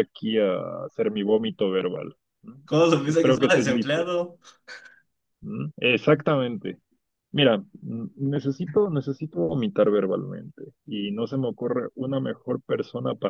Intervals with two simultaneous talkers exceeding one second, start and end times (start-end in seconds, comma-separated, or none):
2.6-4.1